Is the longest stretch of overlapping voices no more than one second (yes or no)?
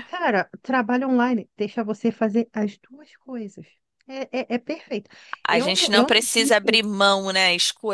no